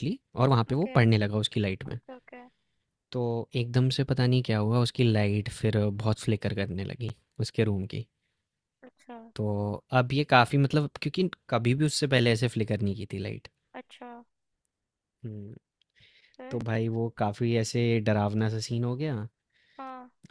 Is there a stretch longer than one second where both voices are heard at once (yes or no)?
no